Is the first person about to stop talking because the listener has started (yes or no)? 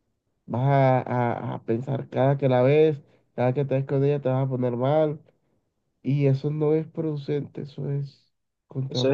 yes